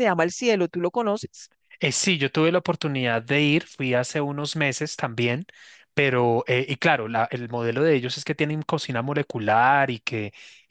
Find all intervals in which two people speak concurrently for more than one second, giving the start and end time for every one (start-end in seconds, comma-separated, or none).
none